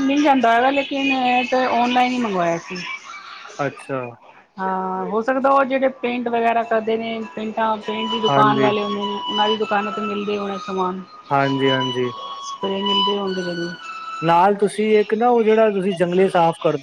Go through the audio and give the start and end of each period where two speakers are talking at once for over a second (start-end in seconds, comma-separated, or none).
none